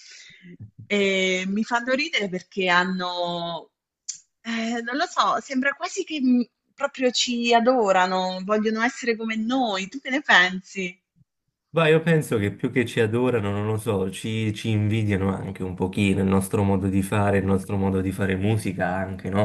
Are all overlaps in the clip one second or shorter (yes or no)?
yes